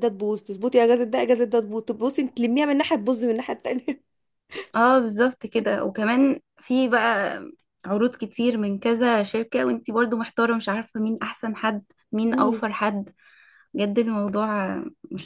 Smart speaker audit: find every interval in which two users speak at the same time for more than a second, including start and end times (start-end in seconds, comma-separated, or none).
none